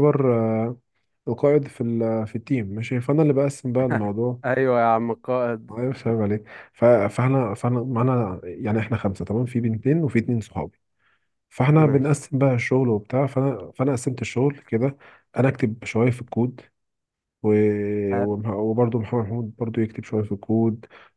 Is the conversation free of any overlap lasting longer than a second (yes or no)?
yes